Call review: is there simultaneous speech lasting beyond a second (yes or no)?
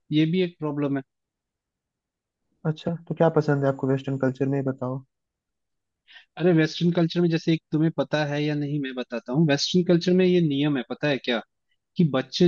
no